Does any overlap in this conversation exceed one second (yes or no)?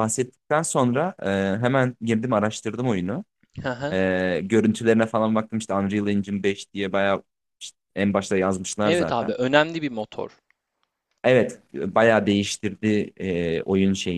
no